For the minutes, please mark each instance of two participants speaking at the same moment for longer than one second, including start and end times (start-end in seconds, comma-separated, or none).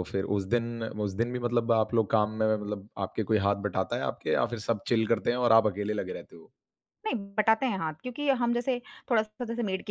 none